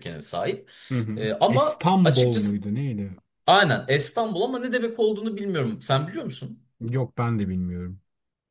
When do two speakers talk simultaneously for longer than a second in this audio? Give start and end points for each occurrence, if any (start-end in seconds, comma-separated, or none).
1.2-2.6